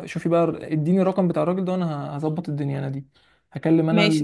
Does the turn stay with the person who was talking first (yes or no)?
yes